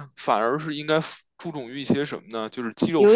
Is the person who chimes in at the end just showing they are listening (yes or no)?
yes